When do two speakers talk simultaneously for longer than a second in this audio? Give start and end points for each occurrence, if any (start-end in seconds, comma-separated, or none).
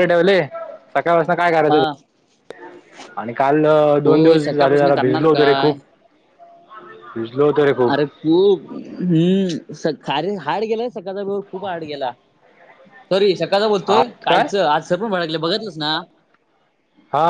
4.0-5.7